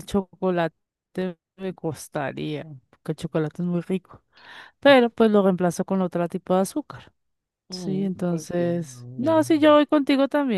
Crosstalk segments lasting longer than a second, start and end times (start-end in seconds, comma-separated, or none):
7.7-9.8